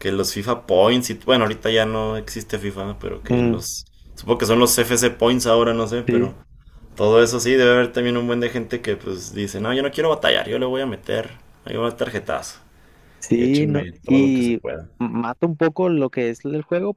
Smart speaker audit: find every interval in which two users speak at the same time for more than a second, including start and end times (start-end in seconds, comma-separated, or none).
13.3-14.6